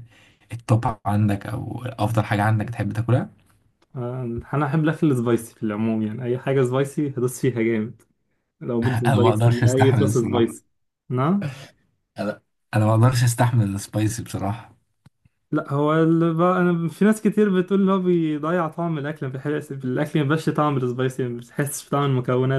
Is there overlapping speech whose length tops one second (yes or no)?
yes